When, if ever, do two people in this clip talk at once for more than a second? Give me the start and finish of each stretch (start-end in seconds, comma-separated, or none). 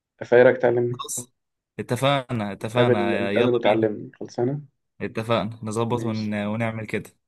2.6-3.9